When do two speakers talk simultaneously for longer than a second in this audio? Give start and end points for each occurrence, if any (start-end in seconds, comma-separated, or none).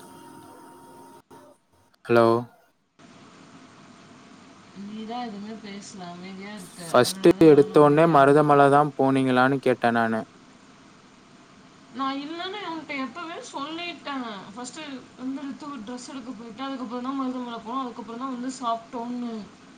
6.9-8.5